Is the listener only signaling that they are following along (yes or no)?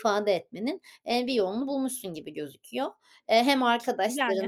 yes